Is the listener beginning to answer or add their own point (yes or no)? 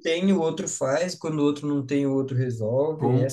yes